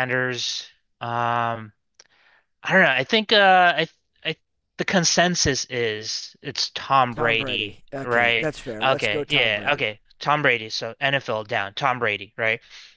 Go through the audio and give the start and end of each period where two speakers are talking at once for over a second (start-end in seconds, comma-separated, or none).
7.1-9.9